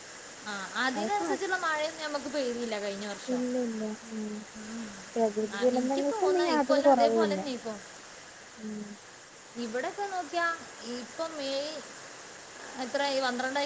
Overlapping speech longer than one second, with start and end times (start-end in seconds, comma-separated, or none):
5.6-7.4